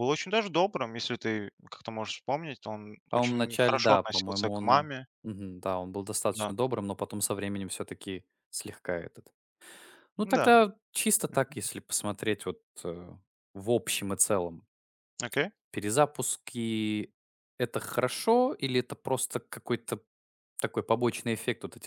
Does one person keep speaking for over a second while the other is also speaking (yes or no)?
yes